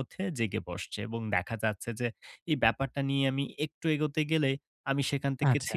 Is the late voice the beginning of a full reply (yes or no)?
no